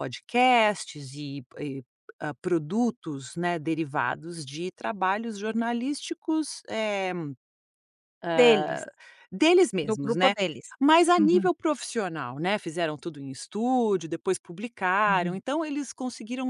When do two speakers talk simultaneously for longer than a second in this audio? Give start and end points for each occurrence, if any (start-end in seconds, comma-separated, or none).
none